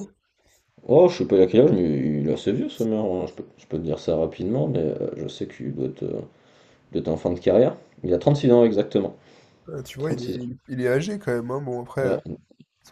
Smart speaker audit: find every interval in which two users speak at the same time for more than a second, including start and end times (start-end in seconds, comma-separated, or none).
none